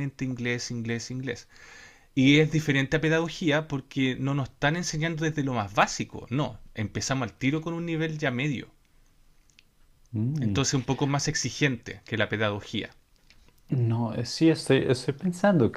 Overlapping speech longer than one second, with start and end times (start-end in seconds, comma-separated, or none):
none